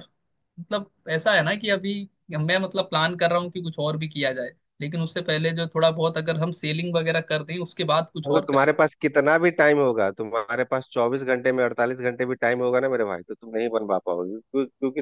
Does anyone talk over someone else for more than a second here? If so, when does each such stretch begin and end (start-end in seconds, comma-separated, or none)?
none